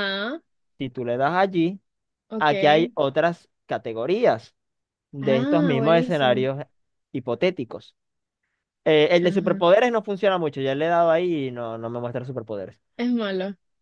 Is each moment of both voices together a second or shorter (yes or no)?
no